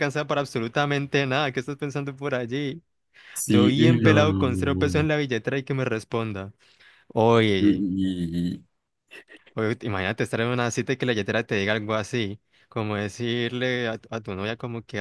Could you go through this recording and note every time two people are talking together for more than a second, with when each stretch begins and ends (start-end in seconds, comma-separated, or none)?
3.5-5.1